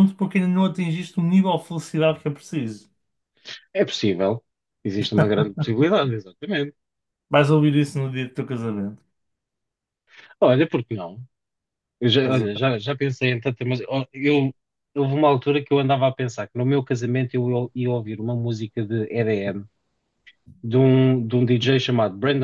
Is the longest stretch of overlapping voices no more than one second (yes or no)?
yes